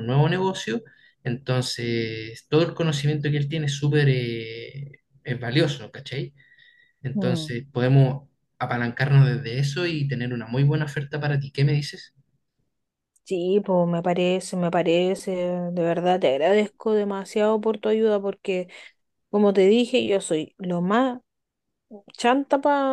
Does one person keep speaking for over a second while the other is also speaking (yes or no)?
no